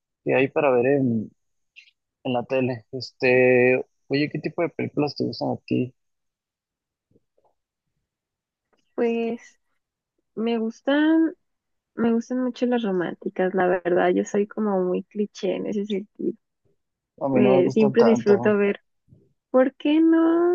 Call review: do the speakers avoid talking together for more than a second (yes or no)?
no